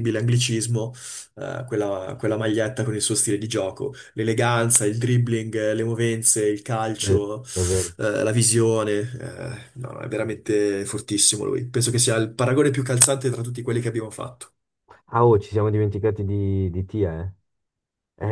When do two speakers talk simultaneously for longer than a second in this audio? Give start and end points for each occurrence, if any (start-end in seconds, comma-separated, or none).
none